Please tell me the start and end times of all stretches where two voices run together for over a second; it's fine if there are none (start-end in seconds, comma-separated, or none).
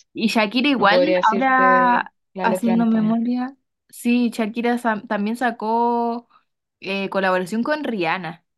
0.8-3.2